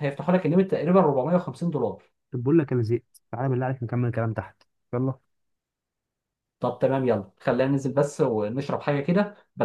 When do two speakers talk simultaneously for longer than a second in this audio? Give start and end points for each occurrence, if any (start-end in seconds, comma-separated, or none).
none